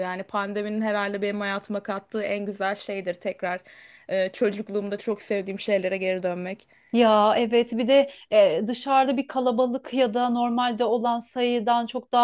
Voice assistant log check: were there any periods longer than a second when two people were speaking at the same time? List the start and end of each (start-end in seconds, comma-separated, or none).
none